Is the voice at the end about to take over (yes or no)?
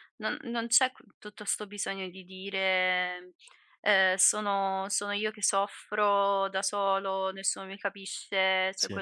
no